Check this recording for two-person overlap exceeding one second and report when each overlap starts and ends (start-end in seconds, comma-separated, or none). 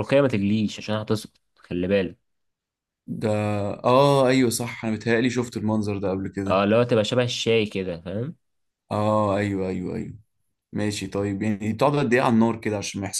none